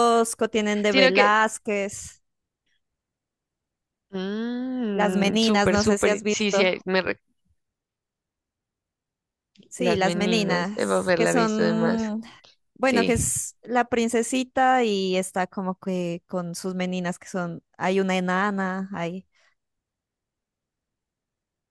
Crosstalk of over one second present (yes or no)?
yes